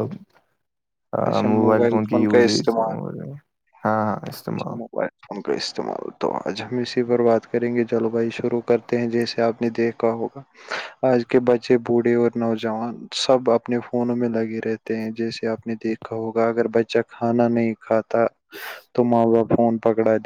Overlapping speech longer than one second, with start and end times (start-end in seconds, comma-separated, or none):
none